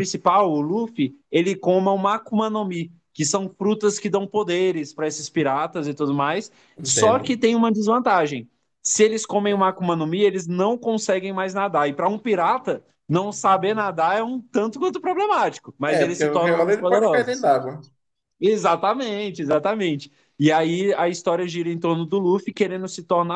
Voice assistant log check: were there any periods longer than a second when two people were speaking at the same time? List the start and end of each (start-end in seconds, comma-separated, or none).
15.9-17.5